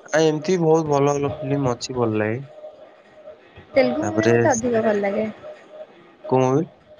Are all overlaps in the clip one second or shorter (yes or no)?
yes